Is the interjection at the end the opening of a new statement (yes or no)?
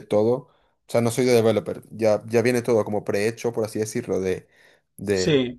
yes